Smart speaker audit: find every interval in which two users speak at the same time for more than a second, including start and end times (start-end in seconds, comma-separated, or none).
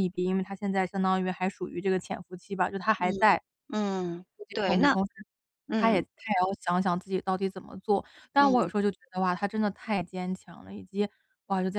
none